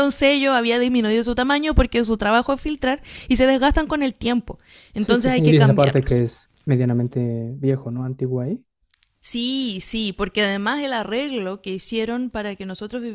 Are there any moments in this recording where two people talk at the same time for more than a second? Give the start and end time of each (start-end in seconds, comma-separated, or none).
5.0-6.2